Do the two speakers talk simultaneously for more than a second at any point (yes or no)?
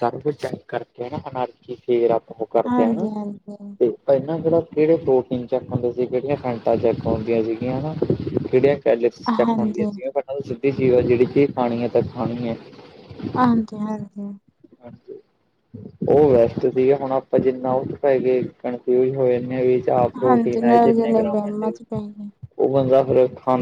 yes